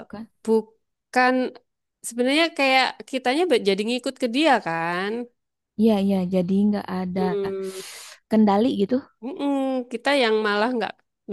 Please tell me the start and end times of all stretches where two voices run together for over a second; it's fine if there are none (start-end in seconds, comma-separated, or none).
none